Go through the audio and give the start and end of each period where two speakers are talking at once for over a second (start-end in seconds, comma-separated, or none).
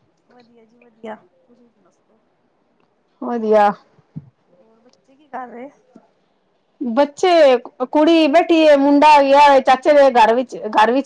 none